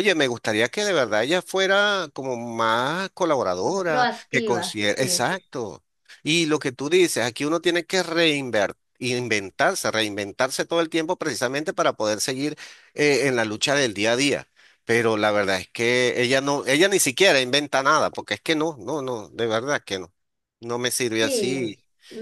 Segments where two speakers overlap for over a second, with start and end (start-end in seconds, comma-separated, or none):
3.9-5.3